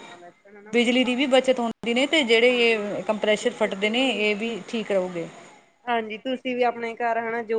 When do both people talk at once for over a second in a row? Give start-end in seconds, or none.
2.5-3.9